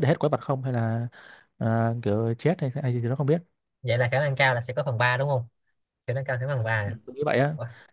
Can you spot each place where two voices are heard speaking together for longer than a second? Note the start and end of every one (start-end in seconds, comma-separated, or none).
none